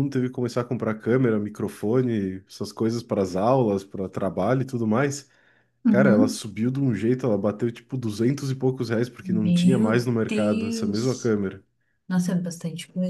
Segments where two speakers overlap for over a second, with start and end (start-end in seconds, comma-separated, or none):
9.2-11.4